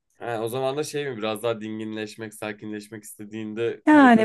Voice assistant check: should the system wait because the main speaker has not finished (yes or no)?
no